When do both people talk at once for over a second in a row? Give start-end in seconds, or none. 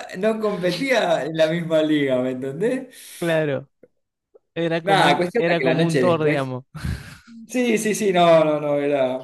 4.8-6.5